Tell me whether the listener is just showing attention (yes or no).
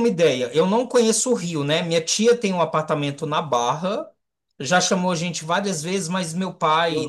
yes